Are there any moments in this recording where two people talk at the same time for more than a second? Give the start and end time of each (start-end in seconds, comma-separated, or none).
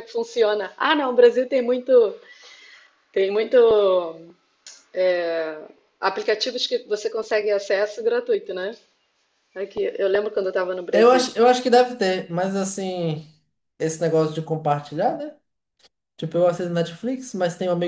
none